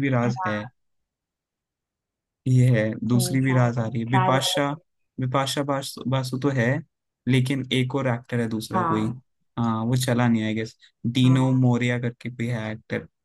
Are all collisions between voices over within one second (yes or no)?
no